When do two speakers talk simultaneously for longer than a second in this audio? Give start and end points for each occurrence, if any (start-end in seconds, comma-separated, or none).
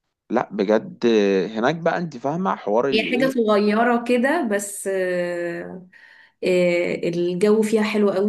none